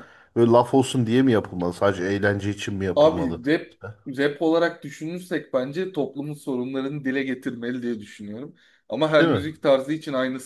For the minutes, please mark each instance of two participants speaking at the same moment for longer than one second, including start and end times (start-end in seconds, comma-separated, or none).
none